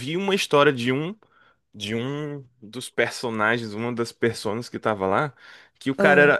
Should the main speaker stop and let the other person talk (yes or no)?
no